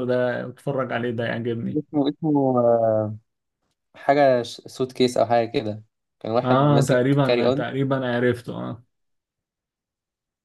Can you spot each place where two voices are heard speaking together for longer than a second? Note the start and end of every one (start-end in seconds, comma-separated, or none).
6.4-7.6